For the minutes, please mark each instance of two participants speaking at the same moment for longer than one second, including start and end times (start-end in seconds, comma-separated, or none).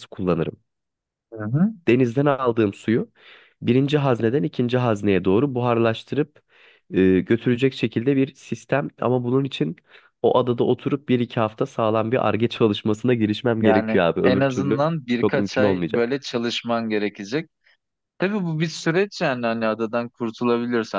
13.6-16.1